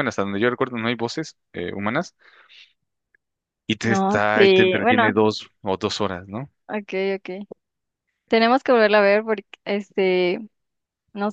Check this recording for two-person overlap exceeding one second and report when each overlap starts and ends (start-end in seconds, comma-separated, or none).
3.8-5.1